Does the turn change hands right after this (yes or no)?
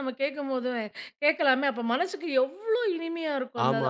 yes